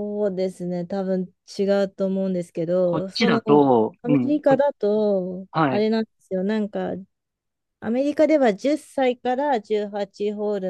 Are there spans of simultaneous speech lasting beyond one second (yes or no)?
no